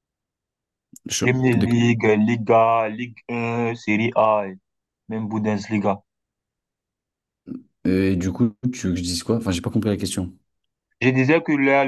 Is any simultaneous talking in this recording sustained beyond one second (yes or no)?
no